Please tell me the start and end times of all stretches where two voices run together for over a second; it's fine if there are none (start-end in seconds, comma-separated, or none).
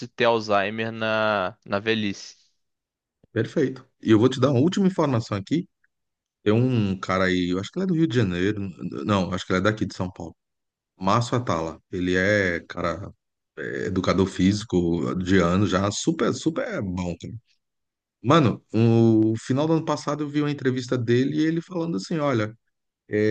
none